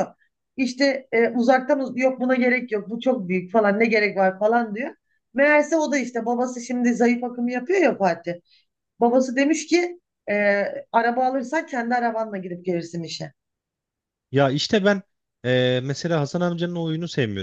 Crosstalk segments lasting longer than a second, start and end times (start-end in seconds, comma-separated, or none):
none